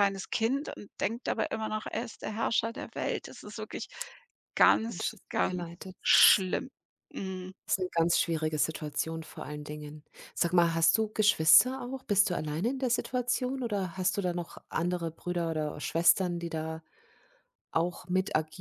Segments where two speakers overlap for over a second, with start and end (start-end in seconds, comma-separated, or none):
4.9-6.5